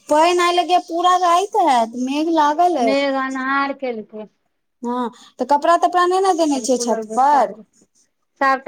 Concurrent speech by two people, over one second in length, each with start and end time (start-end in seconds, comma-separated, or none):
none